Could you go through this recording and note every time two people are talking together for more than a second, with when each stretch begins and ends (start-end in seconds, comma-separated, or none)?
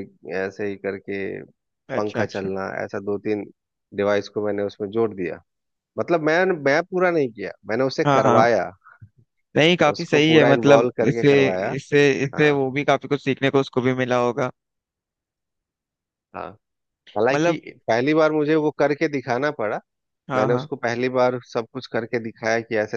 9.9-11.3